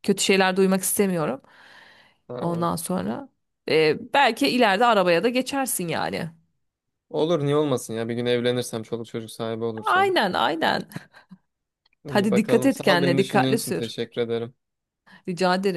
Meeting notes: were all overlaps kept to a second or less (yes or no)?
no